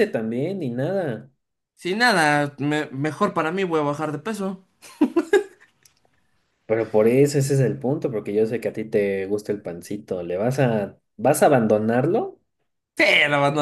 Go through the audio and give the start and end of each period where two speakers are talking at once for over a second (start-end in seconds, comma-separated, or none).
none